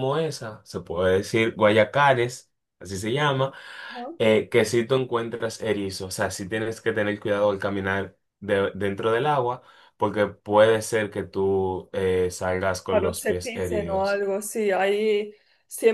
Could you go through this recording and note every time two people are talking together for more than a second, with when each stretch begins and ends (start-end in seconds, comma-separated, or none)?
12.9-14.2